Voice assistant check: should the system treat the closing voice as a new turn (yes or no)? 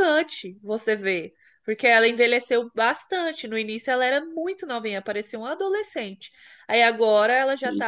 no